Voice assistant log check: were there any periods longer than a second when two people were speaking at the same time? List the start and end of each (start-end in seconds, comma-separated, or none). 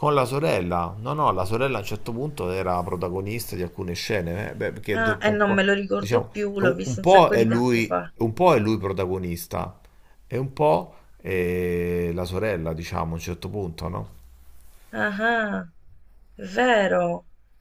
5.0-8.1